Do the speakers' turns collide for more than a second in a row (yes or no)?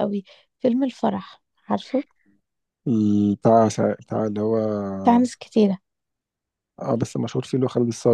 no